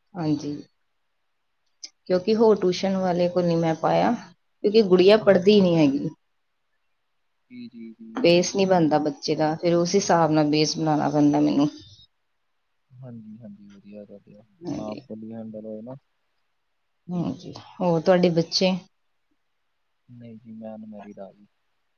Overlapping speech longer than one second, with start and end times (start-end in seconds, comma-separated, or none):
none